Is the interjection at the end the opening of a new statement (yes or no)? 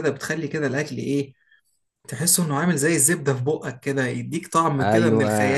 yes